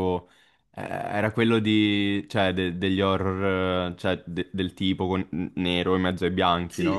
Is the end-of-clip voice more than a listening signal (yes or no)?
yes